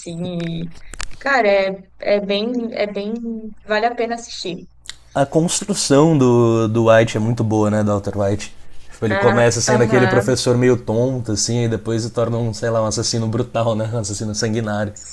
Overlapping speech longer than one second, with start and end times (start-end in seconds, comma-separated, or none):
9.1-10.4